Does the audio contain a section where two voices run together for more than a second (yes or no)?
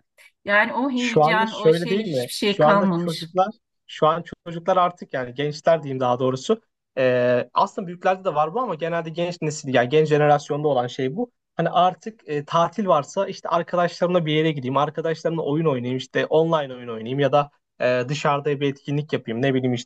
yes